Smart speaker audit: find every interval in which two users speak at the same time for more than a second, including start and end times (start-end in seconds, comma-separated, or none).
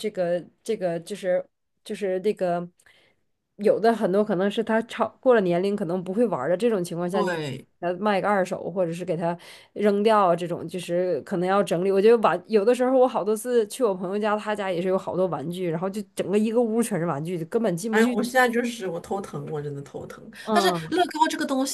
none